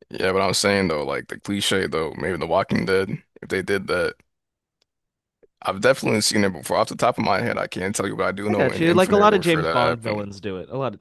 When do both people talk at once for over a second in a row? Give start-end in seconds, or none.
8.5-10.3